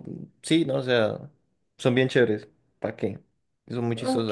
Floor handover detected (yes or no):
yes